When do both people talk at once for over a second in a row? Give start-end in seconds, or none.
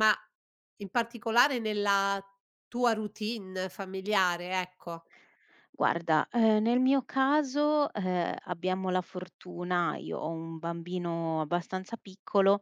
none